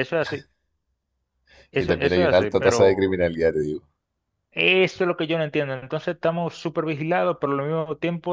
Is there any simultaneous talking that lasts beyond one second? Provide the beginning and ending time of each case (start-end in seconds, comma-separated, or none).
1.7-3.2